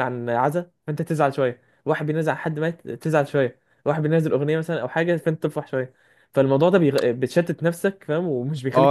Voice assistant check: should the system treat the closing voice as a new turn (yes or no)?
yes